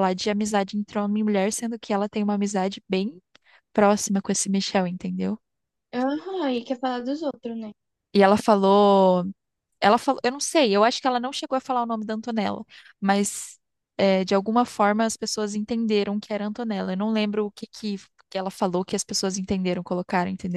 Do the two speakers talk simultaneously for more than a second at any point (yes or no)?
no